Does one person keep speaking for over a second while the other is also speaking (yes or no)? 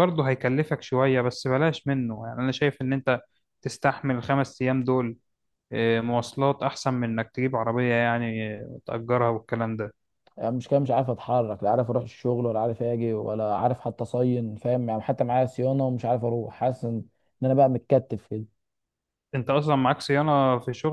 no